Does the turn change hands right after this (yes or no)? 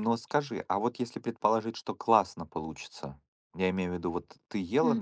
no